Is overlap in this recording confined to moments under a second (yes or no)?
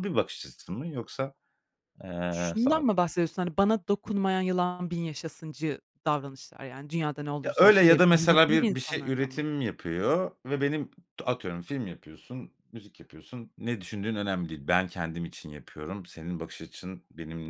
no